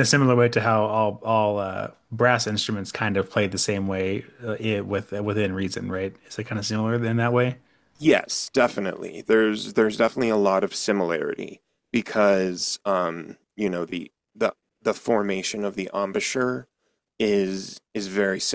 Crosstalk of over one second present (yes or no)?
no